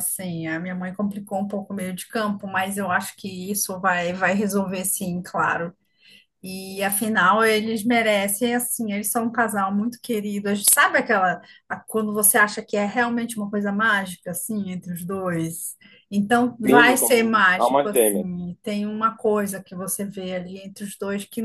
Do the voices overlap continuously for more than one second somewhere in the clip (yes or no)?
yes